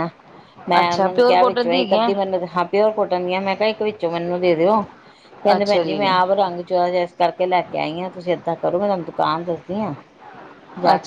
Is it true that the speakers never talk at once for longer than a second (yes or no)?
no